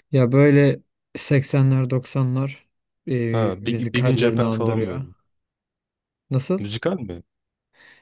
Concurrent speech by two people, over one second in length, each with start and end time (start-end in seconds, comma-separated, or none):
3.6-5.1